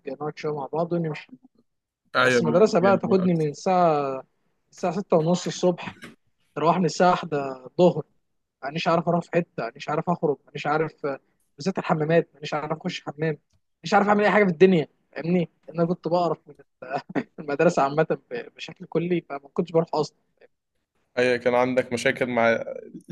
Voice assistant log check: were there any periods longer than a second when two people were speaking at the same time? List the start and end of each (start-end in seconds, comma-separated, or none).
2.2-3.5